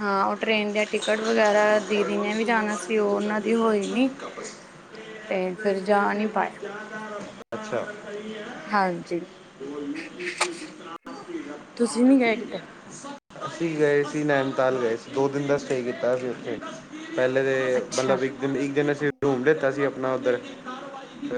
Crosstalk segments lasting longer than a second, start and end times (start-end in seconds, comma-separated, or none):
none